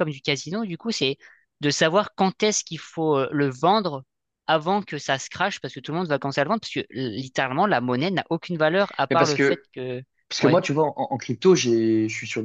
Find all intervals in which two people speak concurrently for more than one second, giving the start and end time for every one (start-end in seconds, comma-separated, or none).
none